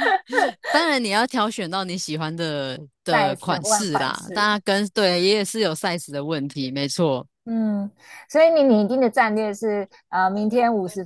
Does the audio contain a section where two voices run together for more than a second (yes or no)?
yes